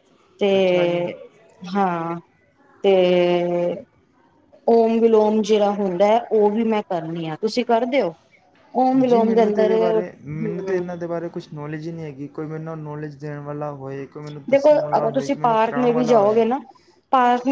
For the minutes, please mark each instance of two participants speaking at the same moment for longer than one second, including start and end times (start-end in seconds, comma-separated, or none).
14.5-16.4